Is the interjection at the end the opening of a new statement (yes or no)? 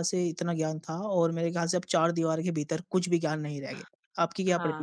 yes